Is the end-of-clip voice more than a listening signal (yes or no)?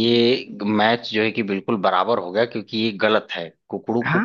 no